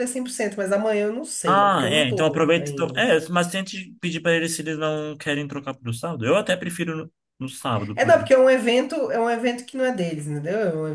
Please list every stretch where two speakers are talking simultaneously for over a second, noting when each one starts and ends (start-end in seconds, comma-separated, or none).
1.5-3.1